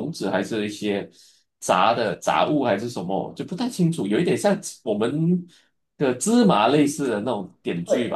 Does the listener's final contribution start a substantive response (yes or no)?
yes